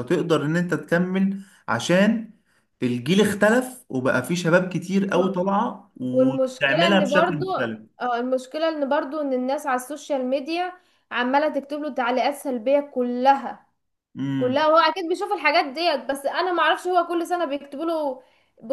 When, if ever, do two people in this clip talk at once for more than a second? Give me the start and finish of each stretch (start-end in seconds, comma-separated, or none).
6.1-7.4